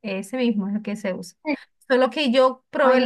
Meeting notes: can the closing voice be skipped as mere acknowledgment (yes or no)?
yes